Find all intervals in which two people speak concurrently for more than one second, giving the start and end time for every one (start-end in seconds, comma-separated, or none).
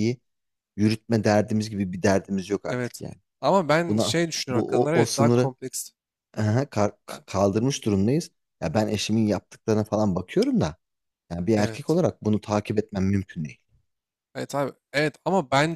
3.9-5.5